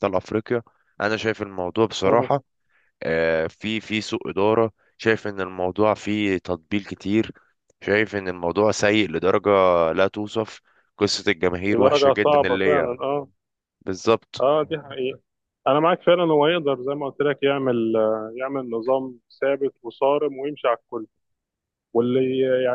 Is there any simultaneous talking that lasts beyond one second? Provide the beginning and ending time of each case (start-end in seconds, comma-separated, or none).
11.7-13.0